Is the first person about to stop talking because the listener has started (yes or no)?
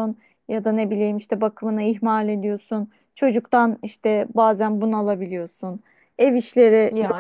no